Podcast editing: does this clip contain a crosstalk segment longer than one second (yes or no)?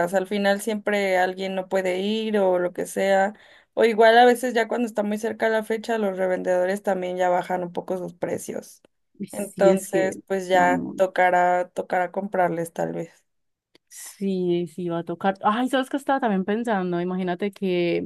yes